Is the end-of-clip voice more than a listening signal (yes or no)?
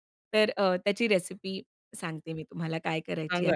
yes